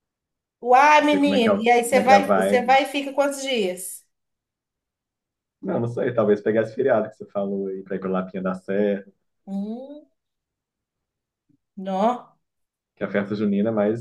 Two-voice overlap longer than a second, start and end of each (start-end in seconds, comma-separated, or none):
1.1-2.8